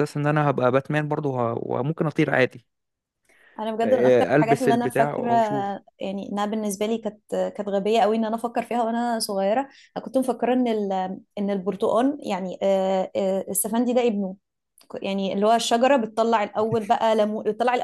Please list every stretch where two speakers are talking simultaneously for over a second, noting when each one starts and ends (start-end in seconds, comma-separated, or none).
3.8-5.3